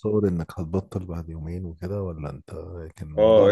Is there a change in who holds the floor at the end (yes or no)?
yes